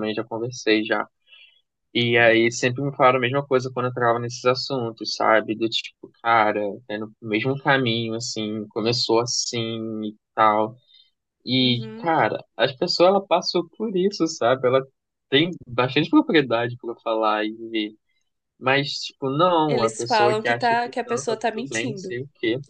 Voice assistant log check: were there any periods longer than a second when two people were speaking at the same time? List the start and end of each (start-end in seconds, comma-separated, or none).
19.7-22.2